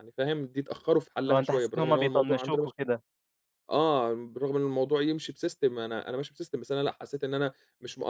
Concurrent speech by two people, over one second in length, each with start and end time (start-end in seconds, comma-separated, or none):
1.3-2.7